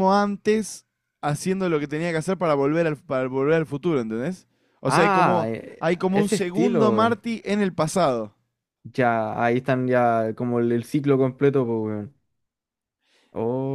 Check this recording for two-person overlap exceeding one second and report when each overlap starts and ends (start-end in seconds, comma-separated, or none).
4.9-7.2